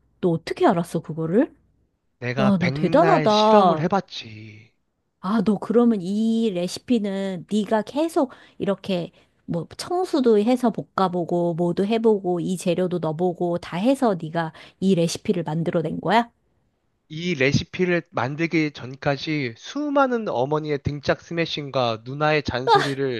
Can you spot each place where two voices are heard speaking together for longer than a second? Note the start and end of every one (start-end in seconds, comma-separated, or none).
2.4-3.9